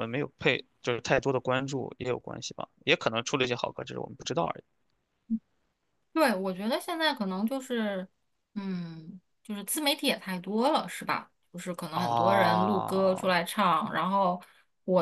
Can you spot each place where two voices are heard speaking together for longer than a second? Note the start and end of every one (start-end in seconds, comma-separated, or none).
11.9-13.3